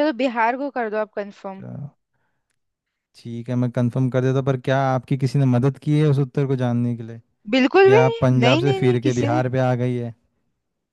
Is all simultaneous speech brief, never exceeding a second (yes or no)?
no